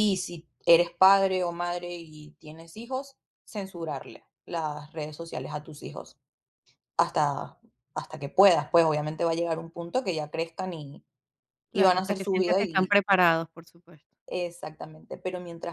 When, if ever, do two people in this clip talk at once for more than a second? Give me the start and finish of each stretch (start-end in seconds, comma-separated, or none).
11.7-12.9